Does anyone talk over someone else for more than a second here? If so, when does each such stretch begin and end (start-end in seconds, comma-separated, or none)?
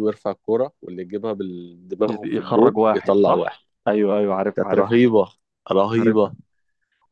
2.1-3.7